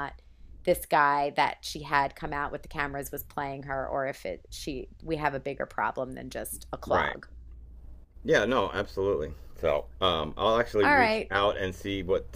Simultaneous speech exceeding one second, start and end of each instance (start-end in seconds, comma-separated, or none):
none